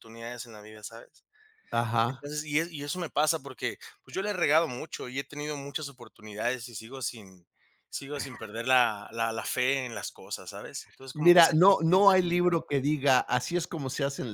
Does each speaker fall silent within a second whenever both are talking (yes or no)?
no